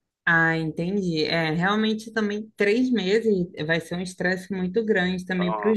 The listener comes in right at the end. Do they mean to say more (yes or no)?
no